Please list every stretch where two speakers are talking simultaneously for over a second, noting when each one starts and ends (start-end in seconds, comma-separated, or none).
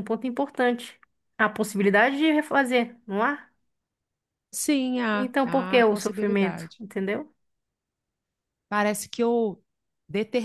5.1-6.8